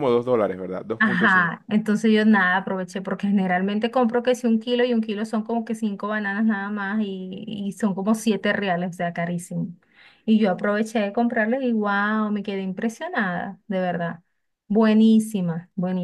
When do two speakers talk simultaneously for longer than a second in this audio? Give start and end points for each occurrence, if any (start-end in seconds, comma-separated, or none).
none